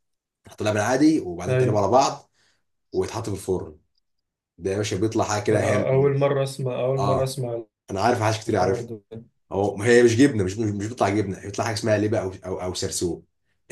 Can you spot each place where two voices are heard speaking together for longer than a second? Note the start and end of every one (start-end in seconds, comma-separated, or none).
none